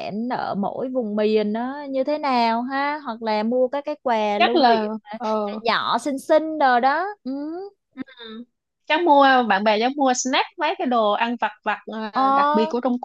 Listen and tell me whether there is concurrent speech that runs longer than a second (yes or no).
no